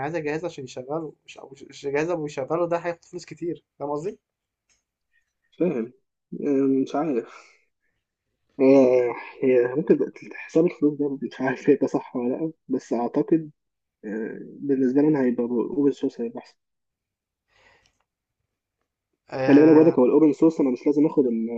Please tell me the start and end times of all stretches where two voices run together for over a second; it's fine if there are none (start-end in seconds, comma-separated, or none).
none